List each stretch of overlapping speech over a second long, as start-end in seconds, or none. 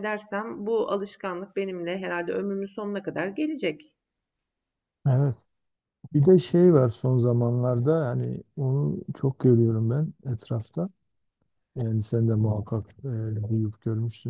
none